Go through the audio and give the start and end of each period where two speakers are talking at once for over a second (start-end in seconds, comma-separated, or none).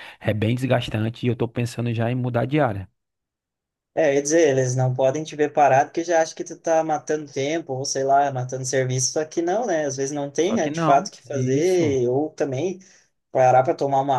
10.4-12.0